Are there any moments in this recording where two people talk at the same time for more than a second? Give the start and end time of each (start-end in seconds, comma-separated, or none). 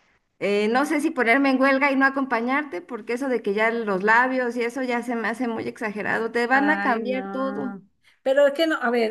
6.5-7.8